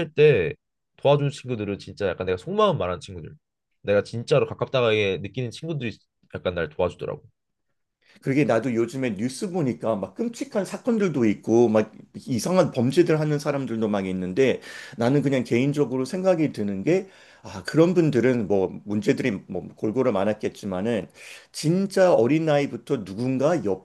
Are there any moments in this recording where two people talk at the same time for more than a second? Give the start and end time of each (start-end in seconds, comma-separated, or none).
none